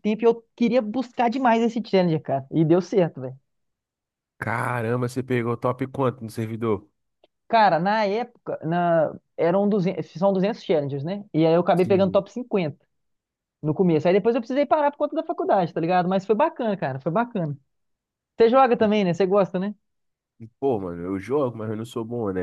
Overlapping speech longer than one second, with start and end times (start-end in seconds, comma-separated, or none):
none